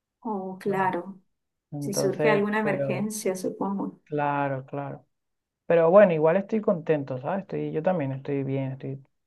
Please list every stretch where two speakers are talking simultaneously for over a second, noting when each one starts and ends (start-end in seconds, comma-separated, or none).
1.8-3.1